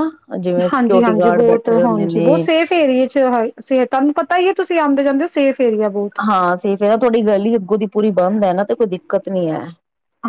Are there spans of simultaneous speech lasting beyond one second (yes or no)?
yes